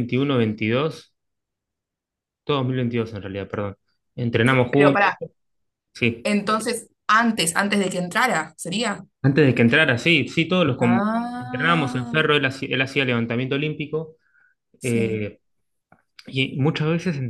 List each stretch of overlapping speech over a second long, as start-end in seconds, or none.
10.8-12.2